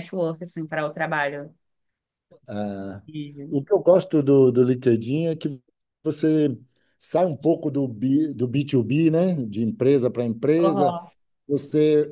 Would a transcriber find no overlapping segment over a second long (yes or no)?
yes